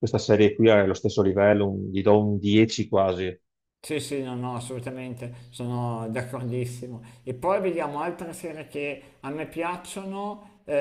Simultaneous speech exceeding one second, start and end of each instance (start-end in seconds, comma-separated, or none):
none